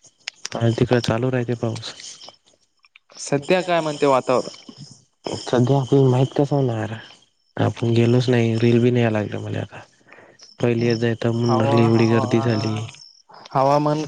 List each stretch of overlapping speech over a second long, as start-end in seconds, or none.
11.5-12.8